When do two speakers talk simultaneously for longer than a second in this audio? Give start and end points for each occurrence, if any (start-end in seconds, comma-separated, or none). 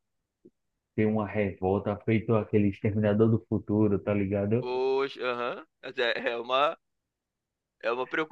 none